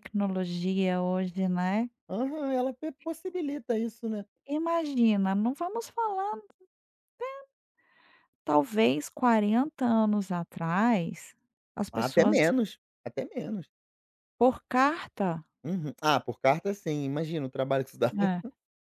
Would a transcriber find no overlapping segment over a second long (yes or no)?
yes